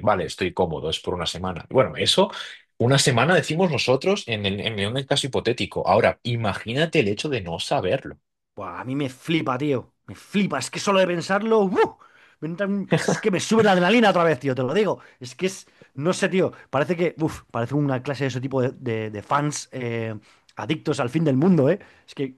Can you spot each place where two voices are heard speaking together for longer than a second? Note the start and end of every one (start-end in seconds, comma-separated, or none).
none